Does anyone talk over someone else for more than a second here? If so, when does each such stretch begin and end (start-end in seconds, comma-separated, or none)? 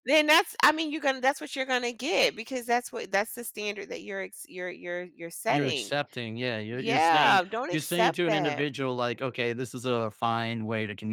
6.8-8.7